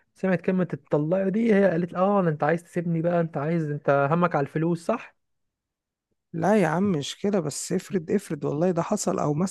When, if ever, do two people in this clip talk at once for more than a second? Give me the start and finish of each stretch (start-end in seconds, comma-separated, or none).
none